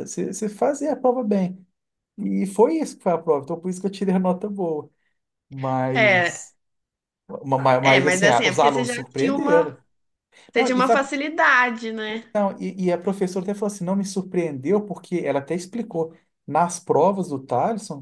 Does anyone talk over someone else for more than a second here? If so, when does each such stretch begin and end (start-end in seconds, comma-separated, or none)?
7.8-9.7